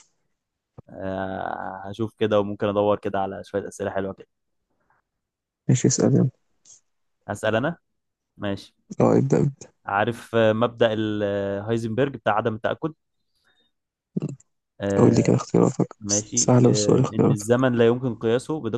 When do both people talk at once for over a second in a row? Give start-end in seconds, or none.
16.0-17.5